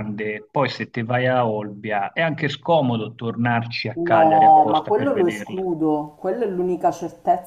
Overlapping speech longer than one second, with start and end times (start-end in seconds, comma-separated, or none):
4.0-5.7